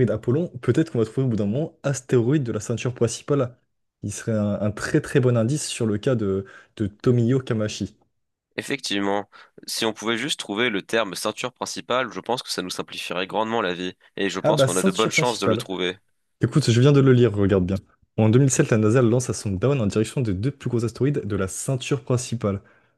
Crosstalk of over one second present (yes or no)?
yes